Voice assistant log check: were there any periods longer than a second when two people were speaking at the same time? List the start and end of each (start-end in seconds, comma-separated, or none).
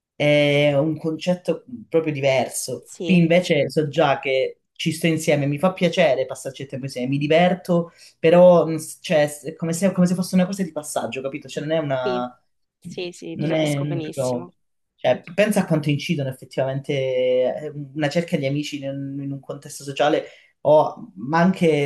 13.3-14.5